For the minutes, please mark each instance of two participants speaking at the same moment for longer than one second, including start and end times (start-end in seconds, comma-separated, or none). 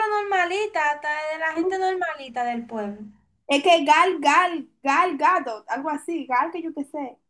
none